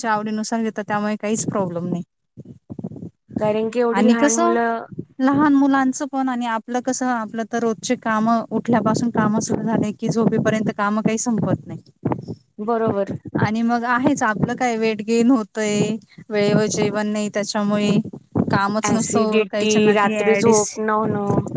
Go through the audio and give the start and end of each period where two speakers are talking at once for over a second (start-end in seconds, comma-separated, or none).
18.9-20.6